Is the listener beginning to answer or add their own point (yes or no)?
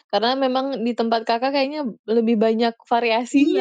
yes